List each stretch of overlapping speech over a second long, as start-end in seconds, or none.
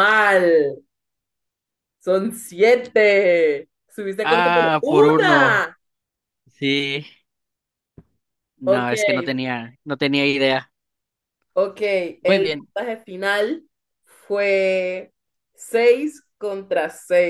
4.2-5.6